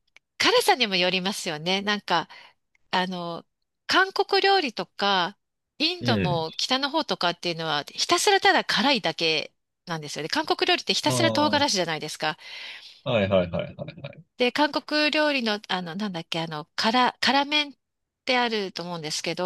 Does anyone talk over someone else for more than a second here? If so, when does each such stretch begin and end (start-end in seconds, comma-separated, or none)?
none